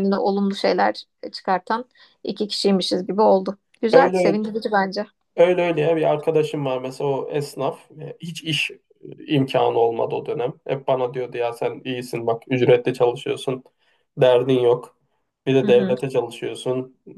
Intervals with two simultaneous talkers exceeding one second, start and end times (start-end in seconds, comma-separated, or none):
none